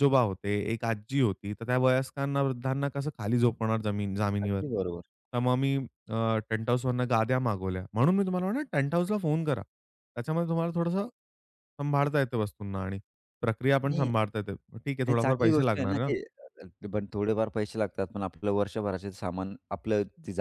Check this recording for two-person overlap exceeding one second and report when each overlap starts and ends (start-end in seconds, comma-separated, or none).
14.8-16.1